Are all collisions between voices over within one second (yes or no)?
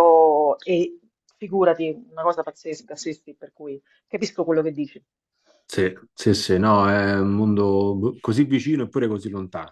yes